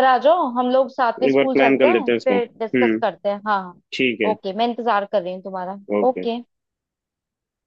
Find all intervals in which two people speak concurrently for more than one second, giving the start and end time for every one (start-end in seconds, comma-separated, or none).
1.3-3.0